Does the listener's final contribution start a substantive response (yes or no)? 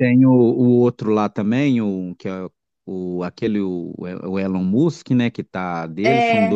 no